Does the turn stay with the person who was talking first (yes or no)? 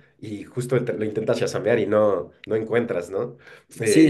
no